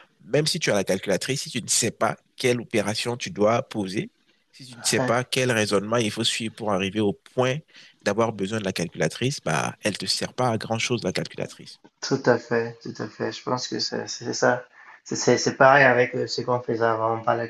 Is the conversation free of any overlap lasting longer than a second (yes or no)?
yes